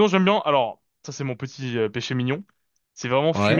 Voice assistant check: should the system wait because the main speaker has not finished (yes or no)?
yes